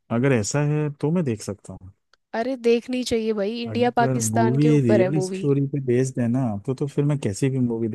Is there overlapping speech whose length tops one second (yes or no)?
yes